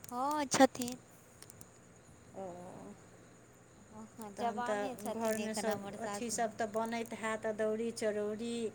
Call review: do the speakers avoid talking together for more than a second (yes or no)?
no